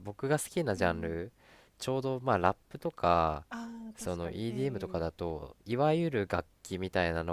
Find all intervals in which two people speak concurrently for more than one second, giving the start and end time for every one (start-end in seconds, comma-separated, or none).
4.0-5.3